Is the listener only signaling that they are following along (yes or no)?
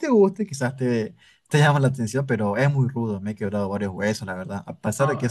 yes